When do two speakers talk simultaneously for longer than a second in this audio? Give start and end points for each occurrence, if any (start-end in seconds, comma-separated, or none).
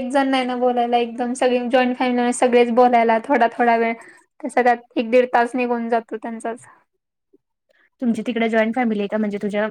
none